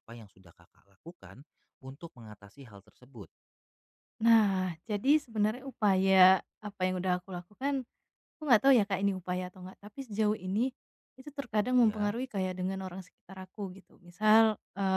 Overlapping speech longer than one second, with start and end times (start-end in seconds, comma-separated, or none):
none